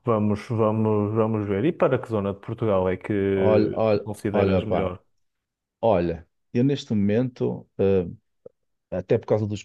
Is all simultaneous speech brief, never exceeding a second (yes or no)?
no